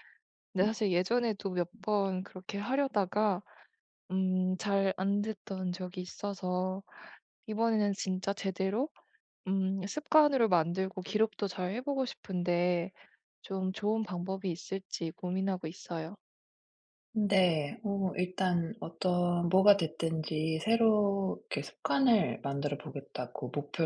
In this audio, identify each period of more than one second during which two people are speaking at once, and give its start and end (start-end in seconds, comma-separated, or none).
none